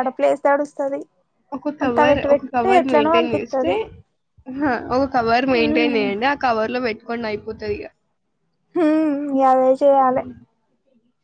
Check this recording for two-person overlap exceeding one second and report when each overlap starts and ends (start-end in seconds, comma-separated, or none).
1.8-3.7